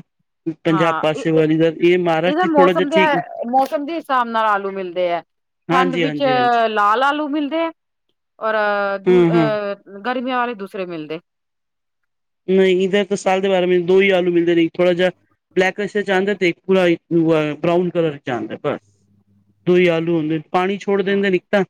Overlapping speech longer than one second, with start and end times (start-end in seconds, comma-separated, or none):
0.7-3.0